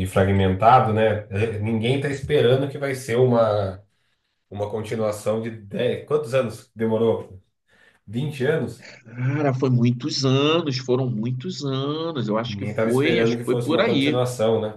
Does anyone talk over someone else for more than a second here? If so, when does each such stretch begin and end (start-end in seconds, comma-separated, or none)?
12.5-14.2